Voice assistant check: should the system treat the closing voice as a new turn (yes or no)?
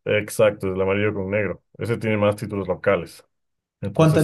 yes